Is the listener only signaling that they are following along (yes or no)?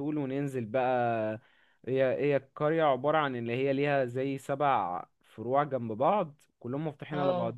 yes